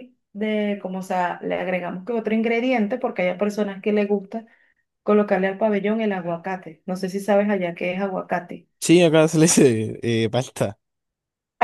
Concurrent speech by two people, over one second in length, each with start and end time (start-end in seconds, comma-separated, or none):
none